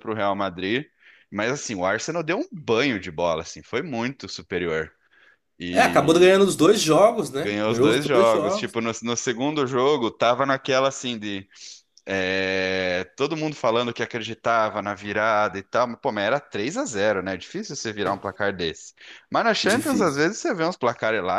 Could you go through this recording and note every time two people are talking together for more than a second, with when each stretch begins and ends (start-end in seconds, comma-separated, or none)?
7.4-8.7